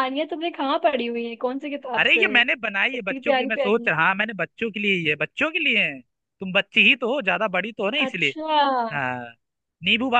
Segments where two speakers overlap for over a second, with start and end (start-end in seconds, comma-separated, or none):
2.0-3.9